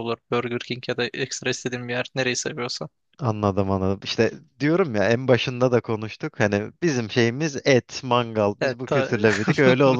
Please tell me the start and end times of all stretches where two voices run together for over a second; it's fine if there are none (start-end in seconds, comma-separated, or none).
none